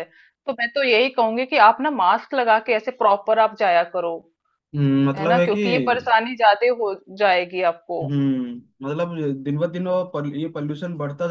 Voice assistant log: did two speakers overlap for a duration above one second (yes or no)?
no